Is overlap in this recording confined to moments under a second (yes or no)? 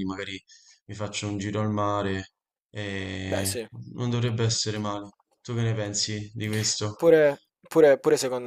yes